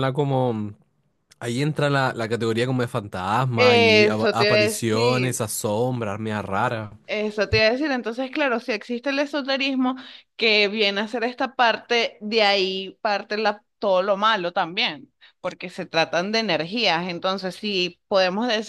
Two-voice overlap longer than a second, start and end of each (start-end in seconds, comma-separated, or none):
3.6-5.4